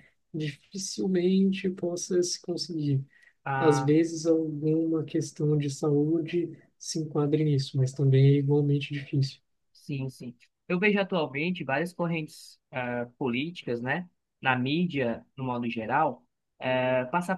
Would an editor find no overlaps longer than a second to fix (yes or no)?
yes